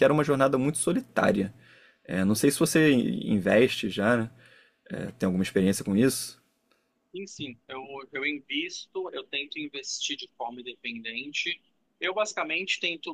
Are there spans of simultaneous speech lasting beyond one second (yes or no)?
no